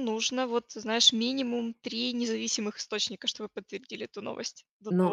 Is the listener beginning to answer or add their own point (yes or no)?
yes